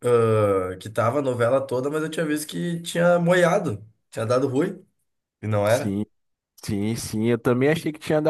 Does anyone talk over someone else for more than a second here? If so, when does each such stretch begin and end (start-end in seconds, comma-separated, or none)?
none